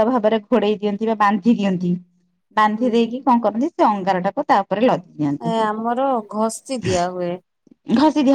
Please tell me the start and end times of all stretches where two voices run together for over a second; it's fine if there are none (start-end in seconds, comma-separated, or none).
none